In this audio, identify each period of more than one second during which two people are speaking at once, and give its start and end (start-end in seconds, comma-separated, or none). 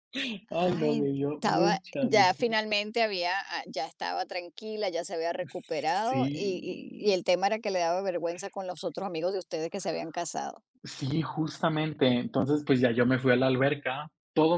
0.6-2.4